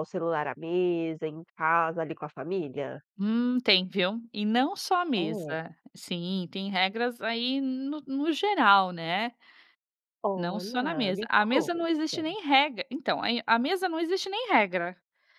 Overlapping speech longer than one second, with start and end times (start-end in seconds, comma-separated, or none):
10.3-12.3